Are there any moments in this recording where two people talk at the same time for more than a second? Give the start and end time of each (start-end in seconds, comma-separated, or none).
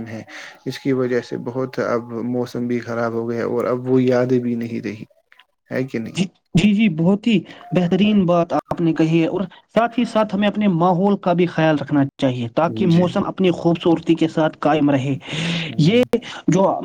none